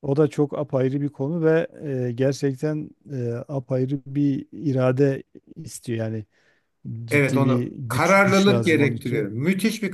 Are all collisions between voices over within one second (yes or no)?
no